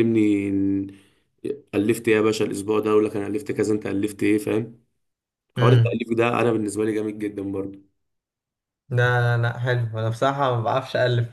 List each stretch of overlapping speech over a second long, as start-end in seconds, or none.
none